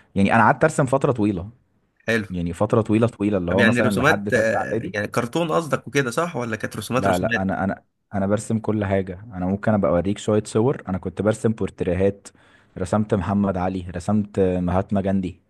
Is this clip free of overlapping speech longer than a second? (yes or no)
no